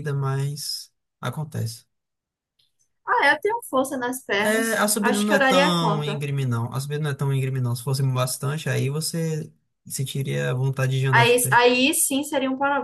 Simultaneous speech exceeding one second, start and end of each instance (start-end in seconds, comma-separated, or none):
4.4-6.2